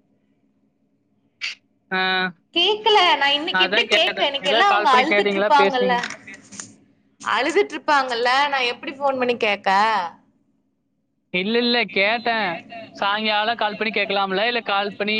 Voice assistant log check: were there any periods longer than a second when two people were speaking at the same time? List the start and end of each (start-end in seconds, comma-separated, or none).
3.6-5.9